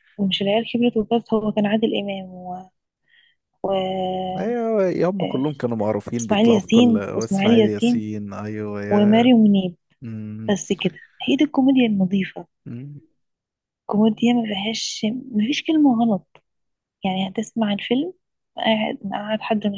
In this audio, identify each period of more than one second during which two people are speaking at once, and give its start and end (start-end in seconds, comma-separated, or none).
6.2-8.1